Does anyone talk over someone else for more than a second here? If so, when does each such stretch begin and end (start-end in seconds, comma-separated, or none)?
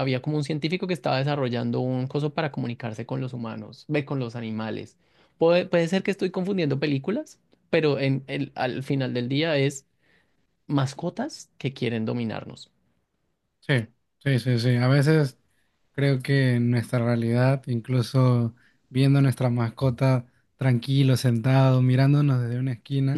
none